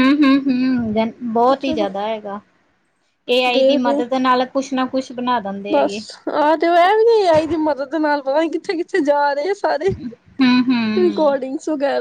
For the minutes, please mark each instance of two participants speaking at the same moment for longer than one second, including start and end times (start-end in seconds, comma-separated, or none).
none